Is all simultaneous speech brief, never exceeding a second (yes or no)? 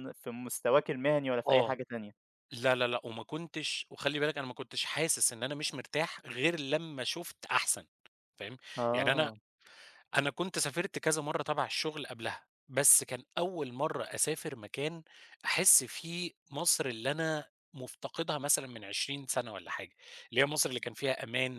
yes